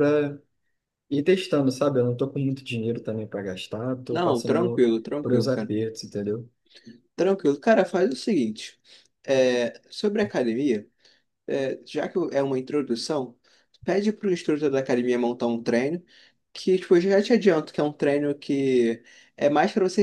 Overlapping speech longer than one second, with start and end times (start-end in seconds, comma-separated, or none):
4.1-5.7